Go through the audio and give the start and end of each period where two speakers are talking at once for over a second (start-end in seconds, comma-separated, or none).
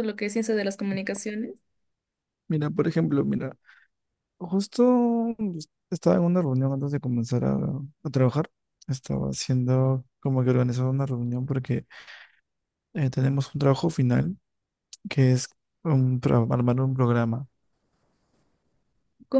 none